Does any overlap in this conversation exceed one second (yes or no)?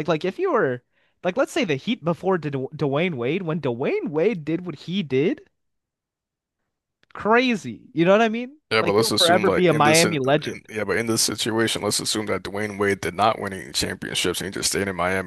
yes